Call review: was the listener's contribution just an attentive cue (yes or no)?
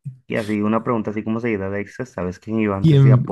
no